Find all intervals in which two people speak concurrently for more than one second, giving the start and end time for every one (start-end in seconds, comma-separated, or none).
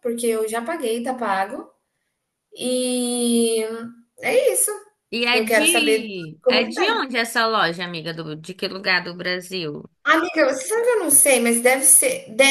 5.3-7.1